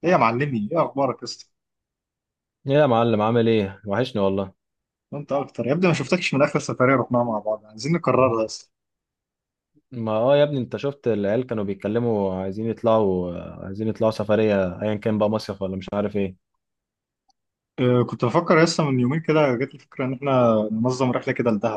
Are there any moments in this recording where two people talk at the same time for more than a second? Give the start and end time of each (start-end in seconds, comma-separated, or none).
none